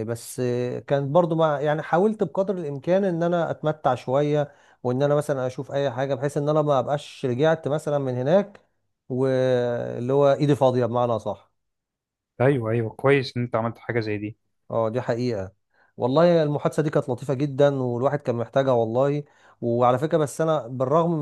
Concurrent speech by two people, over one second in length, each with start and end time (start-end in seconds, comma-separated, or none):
none